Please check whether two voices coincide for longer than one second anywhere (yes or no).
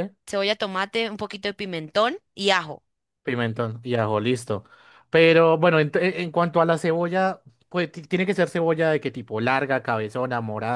no